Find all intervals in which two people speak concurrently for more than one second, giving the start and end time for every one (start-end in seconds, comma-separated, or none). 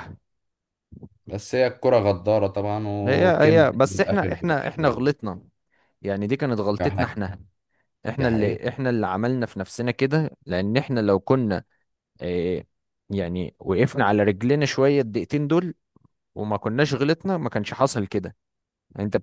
3.1-5.0